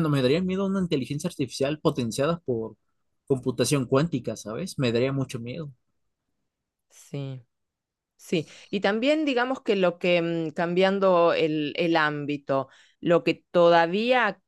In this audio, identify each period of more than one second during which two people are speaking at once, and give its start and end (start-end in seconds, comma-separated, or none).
none